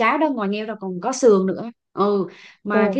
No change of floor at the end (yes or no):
yes